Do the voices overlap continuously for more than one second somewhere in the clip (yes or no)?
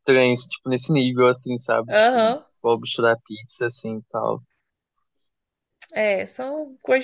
no